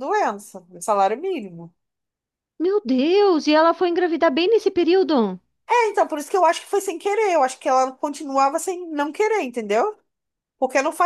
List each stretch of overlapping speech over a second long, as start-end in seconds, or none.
none